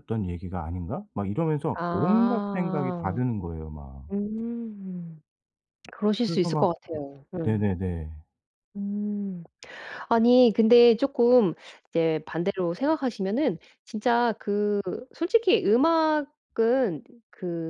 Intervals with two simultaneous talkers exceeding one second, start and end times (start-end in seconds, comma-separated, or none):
1.7-3.2